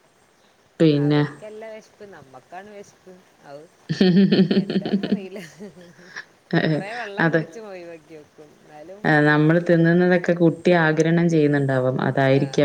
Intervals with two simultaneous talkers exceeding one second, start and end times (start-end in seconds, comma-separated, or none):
none